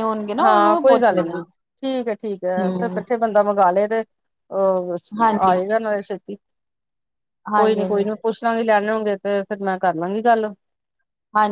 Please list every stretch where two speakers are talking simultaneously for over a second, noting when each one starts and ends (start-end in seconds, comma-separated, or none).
none